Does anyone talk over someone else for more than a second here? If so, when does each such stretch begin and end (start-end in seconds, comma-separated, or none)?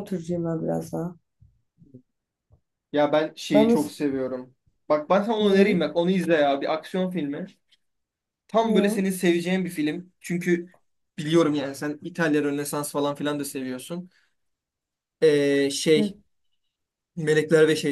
none